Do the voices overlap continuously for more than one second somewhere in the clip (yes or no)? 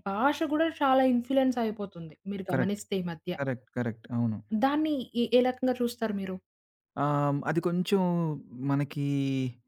no